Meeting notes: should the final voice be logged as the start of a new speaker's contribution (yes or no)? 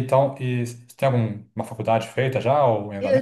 yes